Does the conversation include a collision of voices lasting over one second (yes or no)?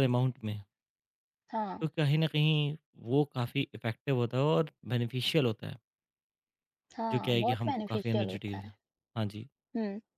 yes